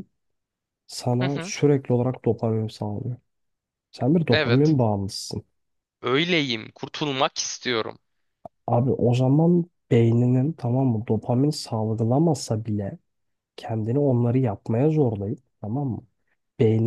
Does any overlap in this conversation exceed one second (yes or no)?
no